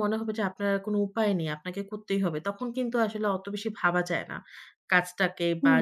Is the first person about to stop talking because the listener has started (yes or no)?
no